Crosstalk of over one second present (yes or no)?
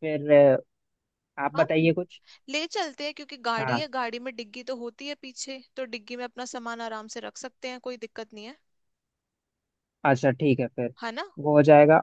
no